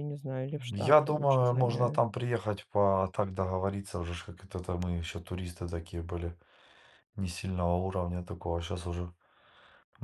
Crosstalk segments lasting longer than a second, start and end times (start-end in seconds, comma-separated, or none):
0.8-2.0